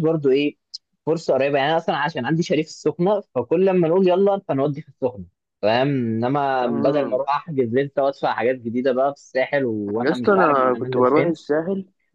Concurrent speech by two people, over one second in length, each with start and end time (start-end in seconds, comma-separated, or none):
10.0-11.4